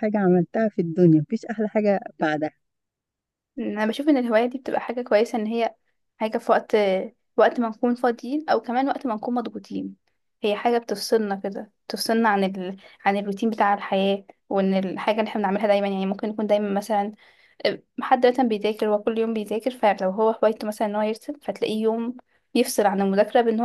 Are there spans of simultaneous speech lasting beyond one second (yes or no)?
no